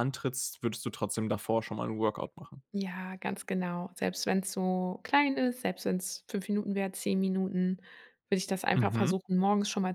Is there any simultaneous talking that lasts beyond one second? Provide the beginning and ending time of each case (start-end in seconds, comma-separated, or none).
none